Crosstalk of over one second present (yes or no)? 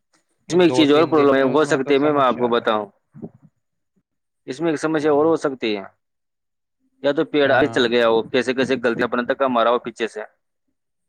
yes